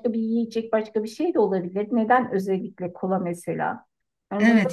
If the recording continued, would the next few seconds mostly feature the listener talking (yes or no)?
yes